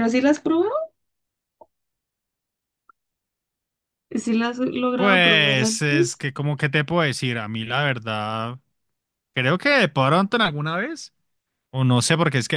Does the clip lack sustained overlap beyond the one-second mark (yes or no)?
no